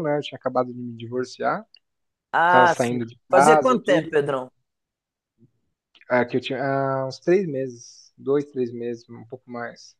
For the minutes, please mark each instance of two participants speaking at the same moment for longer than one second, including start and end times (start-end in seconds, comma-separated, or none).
2.5-4.1